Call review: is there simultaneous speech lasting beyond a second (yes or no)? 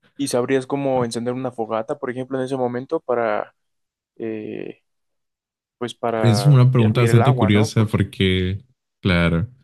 yes